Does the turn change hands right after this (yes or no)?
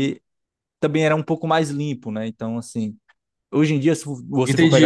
yes